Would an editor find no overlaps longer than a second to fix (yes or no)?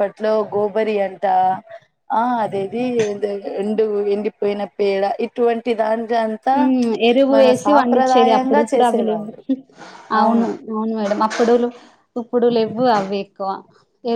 no